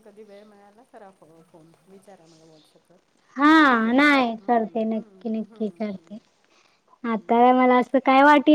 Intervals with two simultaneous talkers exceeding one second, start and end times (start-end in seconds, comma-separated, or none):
none